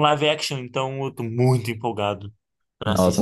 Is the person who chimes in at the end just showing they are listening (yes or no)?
no